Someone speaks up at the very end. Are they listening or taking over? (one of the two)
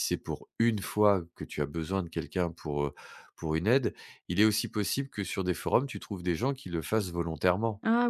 taking over